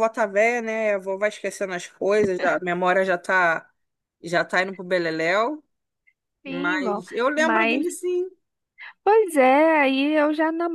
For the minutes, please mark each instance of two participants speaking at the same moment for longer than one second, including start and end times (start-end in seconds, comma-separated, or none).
6.5-7.8